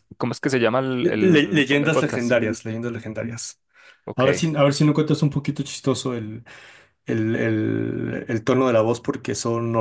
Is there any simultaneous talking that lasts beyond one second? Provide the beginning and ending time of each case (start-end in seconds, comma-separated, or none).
1.0-2.4